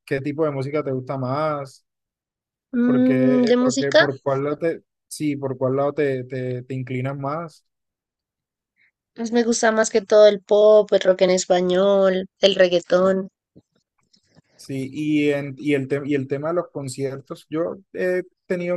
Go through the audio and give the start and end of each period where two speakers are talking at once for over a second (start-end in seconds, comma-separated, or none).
2.9-4.0